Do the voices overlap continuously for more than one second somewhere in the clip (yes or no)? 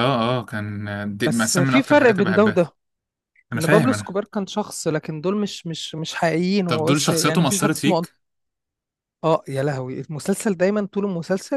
yes